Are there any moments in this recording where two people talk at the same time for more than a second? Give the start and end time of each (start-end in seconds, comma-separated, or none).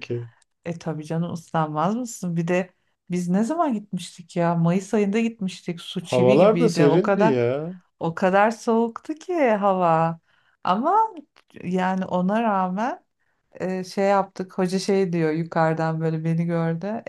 6.0-7.4